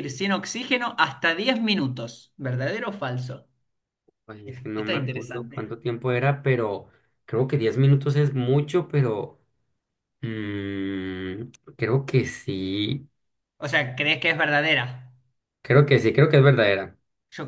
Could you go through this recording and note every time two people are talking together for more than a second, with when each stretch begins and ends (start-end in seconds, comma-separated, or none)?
4.4-5.7